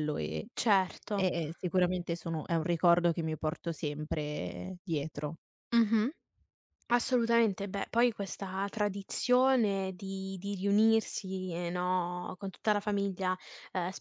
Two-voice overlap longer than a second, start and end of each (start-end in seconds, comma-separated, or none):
none